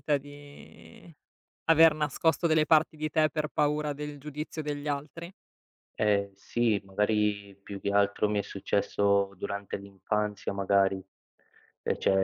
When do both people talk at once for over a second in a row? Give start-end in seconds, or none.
none